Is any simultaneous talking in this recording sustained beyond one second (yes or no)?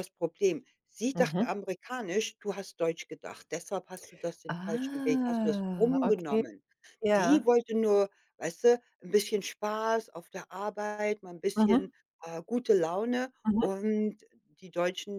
yes